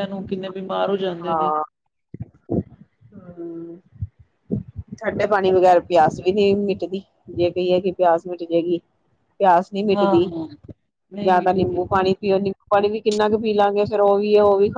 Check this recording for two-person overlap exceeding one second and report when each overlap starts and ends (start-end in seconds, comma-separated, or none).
none